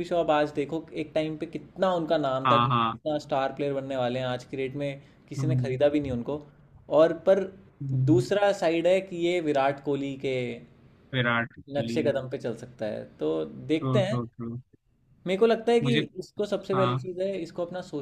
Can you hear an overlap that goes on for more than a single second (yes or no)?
no